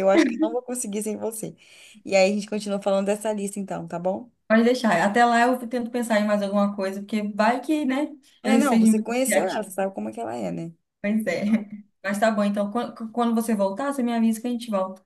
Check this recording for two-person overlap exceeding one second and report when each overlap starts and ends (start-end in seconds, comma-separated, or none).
8.4-9.7